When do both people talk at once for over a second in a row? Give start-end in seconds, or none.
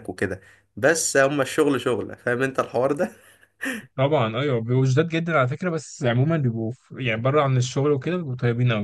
none